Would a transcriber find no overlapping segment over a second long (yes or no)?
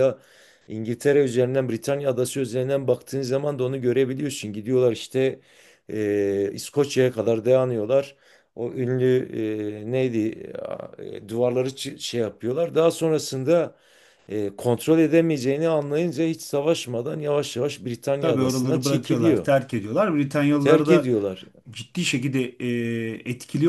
no